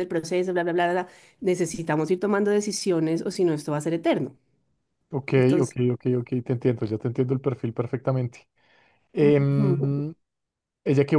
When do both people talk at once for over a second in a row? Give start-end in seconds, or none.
none